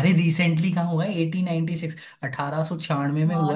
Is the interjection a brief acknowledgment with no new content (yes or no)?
no